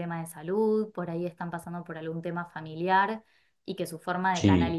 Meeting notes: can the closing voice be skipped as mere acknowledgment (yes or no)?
yes